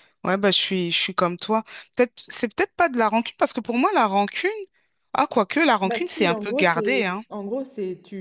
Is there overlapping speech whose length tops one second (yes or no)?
yes